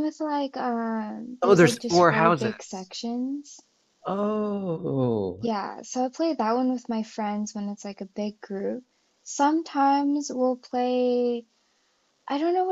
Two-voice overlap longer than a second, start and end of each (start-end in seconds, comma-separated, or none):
1.4-2.9